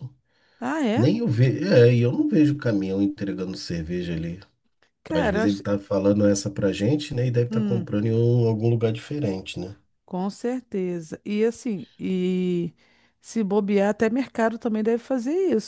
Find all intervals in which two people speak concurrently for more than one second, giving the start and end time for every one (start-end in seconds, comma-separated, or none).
none